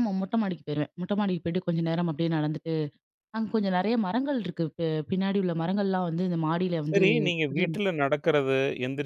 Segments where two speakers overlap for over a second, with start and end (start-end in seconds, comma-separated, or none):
none